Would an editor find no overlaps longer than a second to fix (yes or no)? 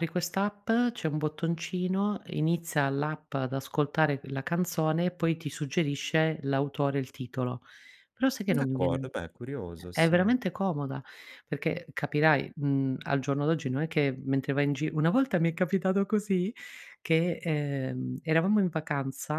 yes